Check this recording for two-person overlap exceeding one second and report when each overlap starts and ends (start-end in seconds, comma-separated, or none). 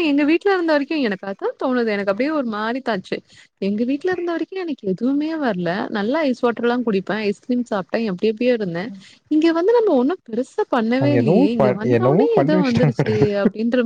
11.0-13.1